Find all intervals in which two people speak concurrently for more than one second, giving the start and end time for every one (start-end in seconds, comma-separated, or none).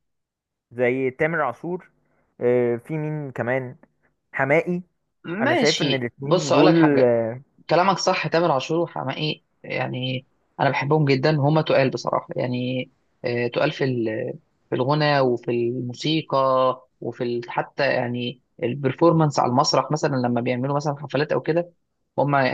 5.4-7.1